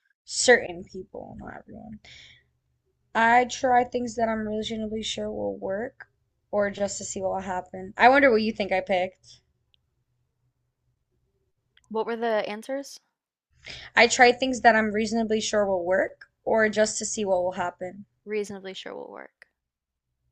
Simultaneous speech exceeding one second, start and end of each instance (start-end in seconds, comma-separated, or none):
none